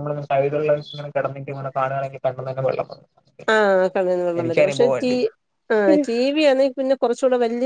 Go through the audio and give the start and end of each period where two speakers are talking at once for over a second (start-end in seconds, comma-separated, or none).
none